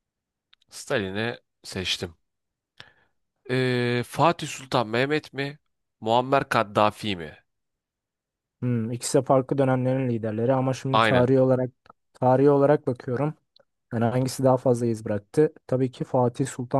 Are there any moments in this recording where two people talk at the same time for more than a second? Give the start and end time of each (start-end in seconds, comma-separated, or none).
none